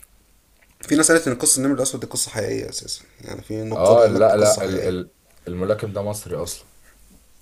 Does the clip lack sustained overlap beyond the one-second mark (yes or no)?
no